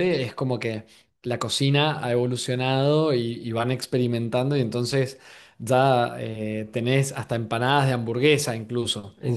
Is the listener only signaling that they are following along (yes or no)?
yes